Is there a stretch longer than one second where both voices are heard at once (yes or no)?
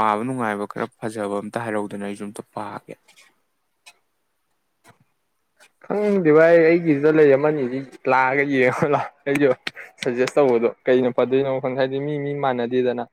no